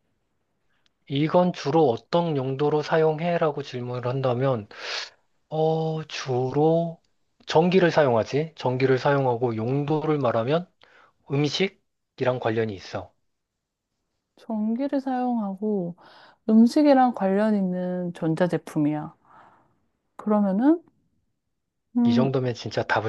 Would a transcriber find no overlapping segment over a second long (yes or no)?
yes